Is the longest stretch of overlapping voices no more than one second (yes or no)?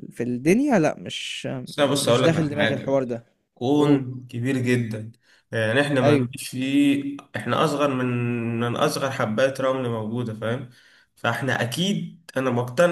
no